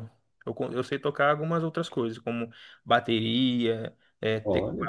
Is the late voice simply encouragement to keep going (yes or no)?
yes